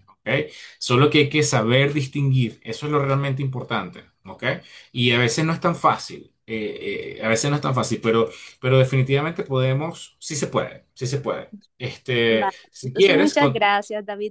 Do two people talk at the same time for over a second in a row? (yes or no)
yes